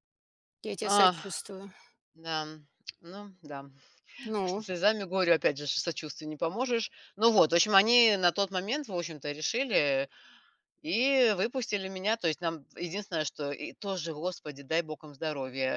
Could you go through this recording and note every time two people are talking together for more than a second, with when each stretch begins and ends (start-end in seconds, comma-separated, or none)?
none